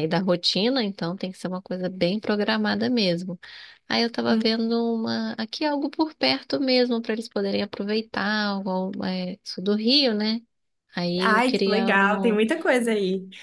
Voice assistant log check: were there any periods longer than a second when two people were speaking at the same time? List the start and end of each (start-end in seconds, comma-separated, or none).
11.2-12.4